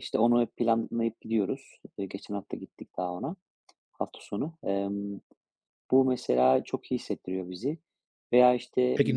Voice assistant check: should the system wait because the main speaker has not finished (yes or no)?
no